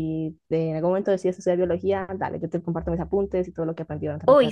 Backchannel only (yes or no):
no